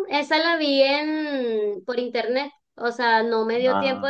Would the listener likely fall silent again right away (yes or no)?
yes